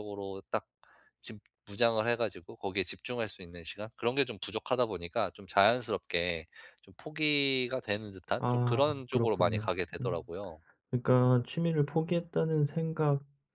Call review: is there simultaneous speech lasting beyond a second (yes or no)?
yes